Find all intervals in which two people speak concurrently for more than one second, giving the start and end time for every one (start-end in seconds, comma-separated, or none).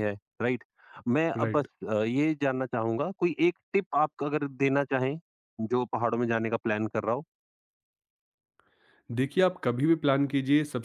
none